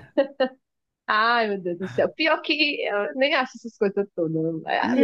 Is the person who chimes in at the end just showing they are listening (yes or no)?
yes